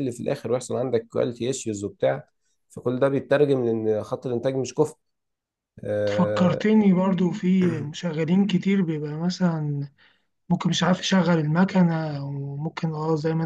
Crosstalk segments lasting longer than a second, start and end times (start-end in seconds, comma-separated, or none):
none